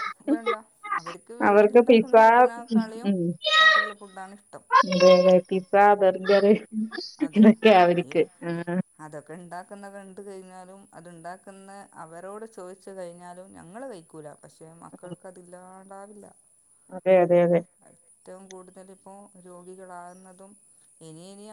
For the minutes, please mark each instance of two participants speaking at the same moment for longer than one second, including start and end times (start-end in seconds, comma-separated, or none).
none